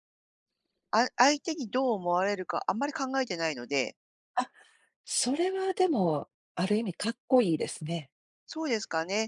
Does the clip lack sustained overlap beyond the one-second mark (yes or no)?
yes